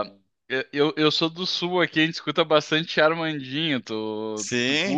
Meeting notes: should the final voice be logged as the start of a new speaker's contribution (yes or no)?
yes